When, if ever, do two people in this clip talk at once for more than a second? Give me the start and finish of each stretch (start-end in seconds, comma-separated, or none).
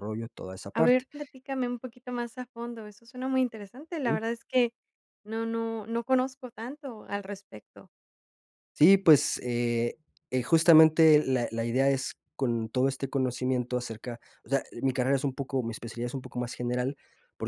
none